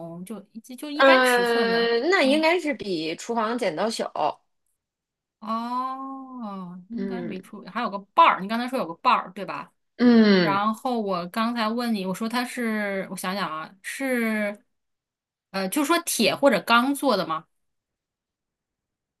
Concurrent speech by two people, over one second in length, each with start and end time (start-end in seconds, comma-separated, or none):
0.9-2.5